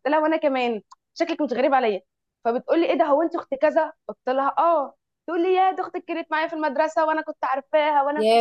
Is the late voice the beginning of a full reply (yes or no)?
no